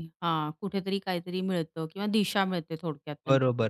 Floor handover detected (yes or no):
yes